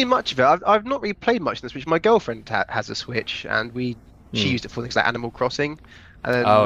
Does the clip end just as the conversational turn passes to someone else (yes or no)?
no